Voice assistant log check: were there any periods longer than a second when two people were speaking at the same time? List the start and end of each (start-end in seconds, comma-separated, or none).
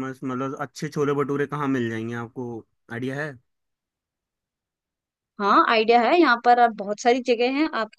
none